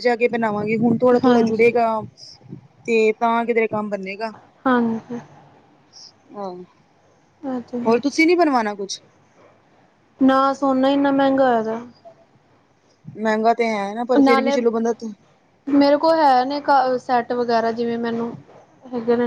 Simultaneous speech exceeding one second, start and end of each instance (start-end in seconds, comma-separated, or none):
none